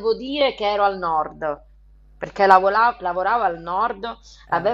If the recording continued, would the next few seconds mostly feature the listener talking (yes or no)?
no